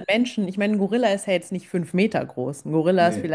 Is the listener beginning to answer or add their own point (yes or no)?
no